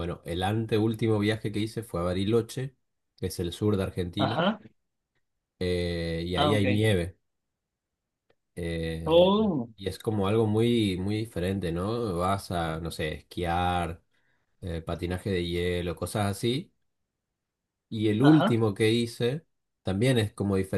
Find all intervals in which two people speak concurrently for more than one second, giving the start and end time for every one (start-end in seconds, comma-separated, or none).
none